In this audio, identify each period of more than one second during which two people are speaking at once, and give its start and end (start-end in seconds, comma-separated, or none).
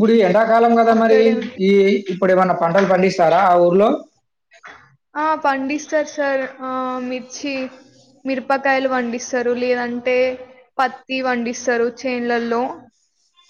none